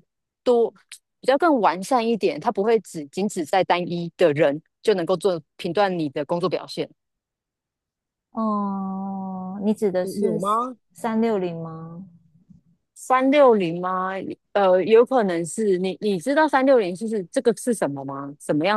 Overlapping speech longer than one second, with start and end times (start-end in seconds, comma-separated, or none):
none